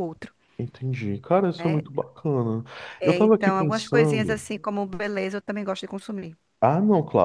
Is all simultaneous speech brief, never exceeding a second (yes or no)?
no